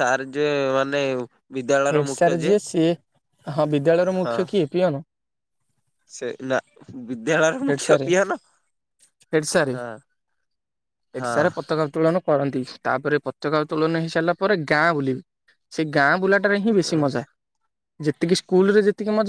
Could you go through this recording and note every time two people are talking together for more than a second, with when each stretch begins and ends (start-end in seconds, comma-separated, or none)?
none